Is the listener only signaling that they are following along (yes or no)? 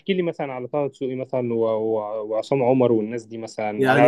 yes